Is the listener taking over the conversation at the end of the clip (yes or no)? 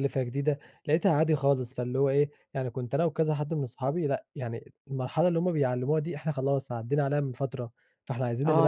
yes